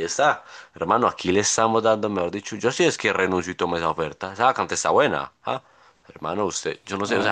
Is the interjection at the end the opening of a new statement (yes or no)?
no